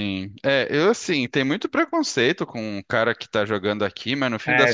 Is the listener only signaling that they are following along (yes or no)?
yes